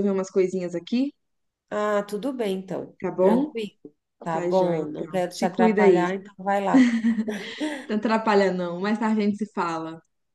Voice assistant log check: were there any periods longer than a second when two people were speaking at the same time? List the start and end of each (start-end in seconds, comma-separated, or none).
4.3-6.0